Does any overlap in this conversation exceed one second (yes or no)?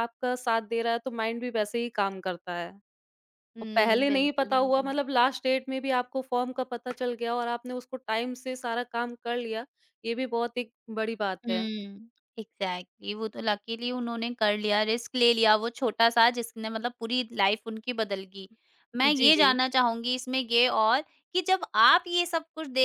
yes